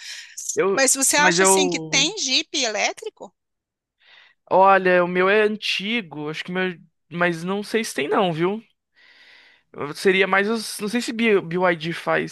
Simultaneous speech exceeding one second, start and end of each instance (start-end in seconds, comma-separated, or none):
0.7-2.1